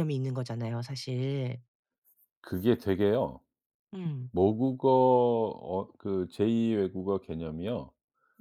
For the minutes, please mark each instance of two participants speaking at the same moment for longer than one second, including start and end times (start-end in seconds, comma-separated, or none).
none